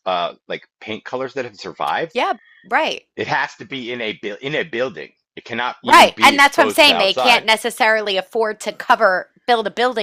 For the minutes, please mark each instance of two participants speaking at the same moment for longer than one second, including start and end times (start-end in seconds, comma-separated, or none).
5.8-7.5